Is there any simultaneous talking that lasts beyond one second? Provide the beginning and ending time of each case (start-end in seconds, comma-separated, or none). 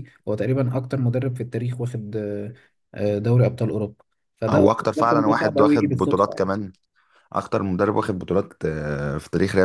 4.5-6.5